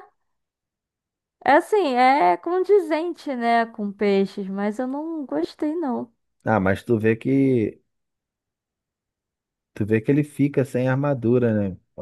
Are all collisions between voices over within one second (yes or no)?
yes